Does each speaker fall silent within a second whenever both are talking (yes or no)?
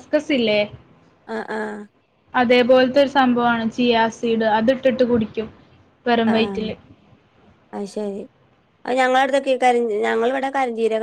yes